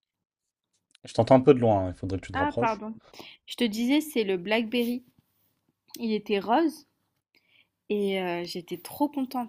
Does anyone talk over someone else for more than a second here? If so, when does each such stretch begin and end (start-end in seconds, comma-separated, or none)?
none